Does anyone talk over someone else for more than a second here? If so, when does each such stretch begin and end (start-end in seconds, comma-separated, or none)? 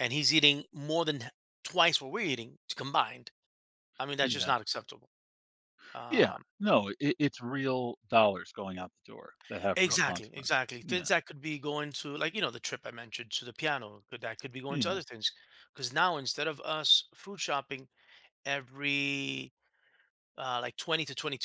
9.7-11.1